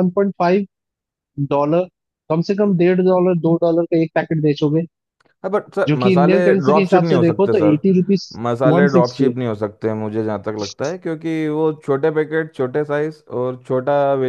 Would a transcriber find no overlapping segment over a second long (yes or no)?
no